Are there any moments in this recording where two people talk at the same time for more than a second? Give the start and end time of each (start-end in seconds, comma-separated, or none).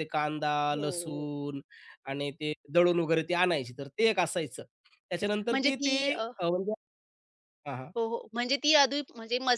none